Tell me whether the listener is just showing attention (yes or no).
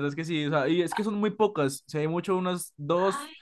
yes